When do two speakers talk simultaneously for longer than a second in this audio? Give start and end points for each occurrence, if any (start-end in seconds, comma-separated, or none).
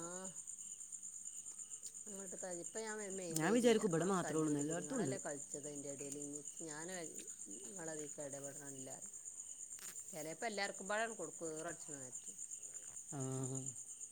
3.4-5.1